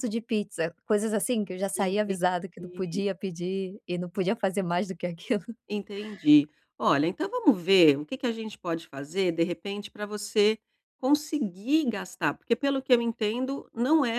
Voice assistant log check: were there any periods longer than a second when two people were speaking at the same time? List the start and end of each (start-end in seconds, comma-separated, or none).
1.8-3.0